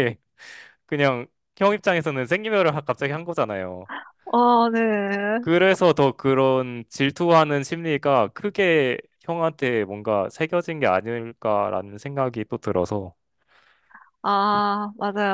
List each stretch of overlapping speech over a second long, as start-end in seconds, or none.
none